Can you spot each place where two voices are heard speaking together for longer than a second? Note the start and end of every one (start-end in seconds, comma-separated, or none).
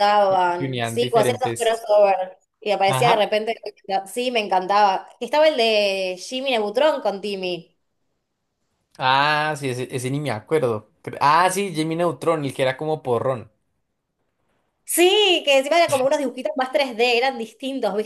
0.6-1.8